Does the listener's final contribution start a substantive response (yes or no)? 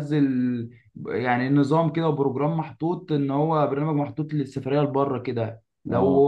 no